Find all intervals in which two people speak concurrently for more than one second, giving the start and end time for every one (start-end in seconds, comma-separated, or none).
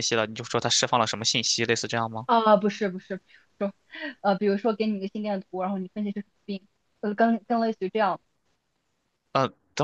none